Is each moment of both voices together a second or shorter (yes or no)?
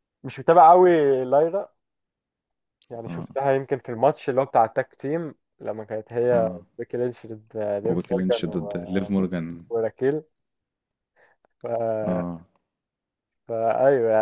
no